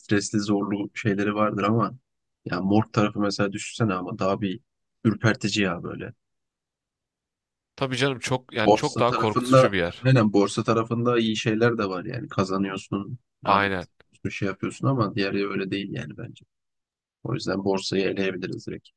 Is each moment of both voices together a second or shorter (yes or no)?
no